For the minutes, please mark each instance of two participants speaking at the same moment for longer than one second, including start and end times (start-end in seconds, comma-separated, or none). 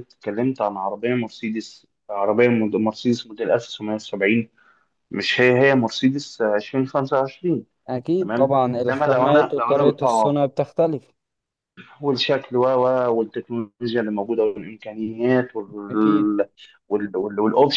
8.2-10.4